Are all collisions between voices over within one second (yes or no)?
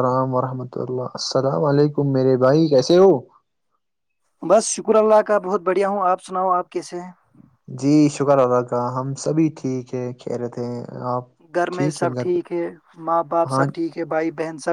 yes